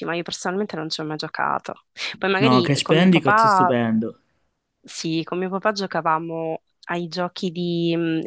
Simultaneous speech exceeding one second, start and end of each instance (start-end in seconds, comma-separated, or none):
2.4-3.8